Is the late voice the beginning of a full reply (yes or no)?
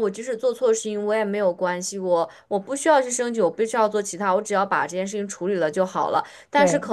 no